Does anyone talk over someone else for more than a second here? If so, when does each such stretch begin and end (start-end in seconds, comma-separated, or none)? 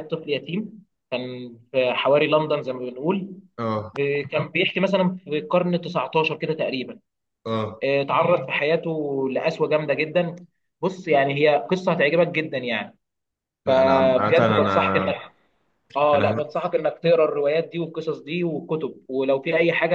13.7-15.1